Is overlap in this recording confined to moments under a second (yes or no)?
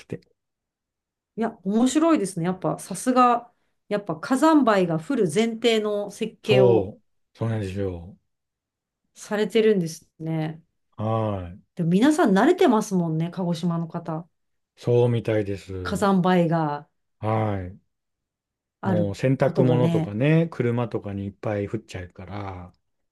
no